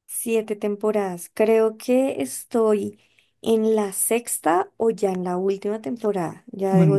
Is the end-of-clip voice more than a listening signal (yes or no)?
yes